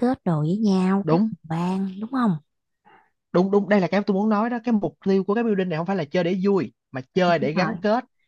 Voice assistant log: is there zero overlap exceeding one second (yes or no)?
yes